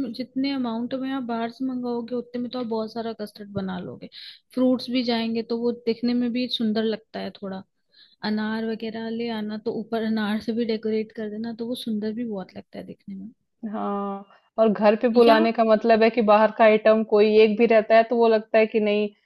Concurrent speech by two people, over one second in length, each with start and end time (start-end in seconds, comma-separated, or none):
none